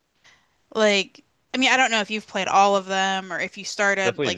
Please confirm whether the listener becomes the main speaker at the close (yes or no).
yes